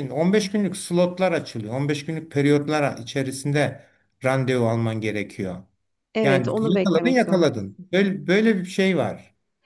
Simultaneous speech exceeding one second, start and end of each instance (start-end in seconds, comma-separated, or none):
6.2-7.9